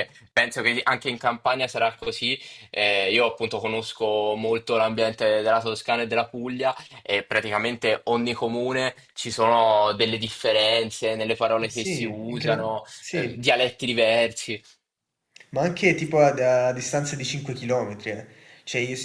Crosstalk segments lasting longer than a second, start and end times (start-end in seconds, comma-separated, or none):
11.6-13.4